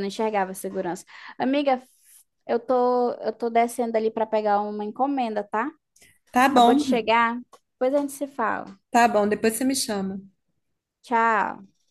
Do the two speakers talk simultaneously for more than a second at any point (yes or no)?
no